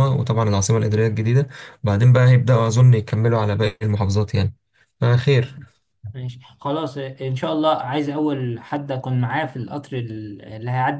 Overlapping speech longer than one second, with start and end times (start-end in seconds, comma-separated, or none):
none